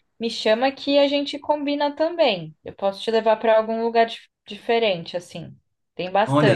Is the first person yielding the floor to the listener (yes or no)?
yes